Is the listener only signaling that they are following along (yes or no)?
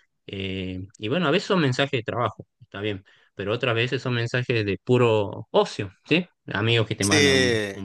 yes